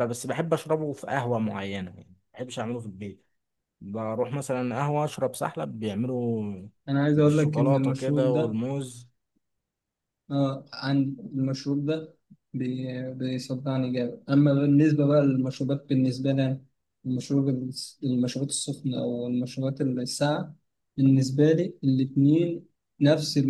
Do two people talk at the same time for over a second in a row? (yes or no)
yes